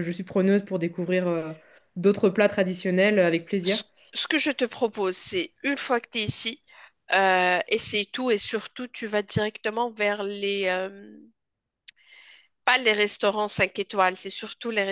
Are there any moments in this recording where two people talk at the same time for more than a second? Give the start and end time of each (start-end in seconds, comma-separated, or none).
none